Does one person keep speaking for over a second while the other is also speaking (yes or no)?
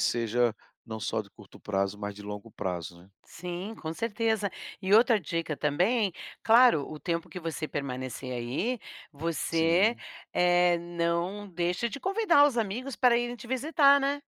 no